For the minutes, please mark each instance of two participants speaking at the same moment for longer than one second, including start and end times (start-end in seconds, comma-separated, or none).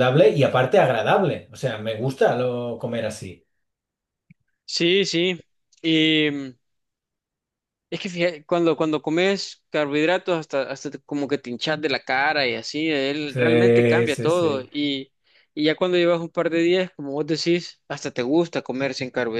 13.2-14.7